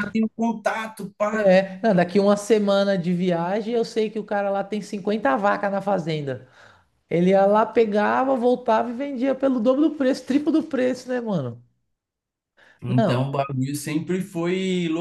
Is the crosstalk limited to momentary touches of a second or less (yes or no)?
yes